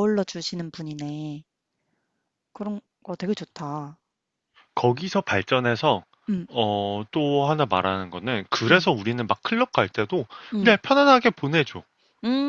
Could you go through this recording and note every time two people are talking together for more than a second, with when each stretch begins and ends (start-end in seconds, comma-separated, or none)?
none